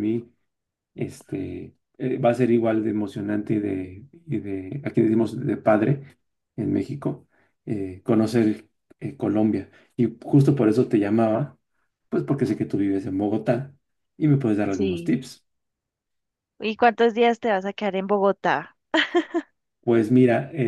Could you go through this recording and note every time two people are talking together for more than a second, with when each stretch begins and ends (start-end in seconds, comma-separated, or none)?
none